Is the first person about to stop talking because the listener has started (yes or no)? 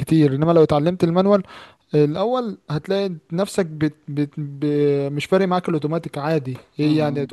yes